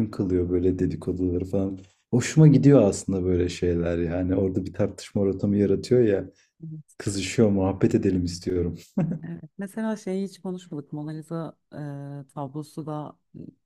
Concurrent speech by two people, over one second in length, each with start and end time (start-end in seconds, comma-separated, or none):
none